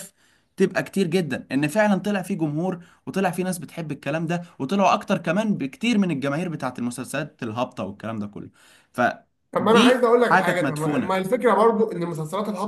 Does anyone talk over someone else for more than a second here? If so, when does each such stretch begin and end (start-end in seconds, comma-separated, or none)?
9.6-11.2